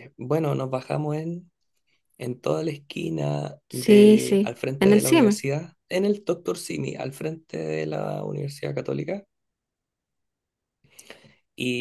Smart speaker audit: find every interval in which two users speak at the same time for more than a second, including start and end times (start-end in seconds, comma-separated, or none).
3.7-5.4